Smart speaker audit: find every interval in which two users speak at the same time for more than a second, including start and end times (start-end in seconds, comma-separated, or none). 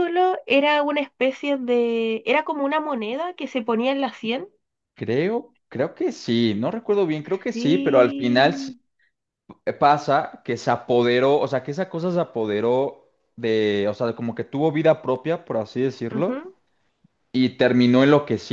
7.5-8.7